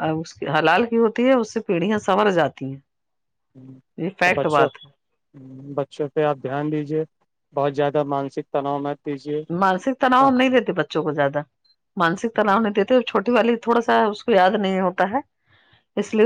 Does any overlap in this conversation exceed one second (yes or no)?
no